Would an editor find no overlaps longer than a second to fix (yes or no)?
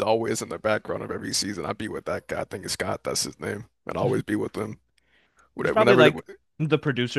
yes